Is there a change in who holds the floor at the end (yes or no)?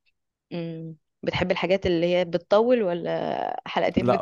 yes